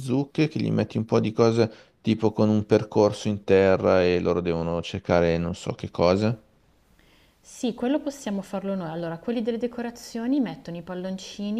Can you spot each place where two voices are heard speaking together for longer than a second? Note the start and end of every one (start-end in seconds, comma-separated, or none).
none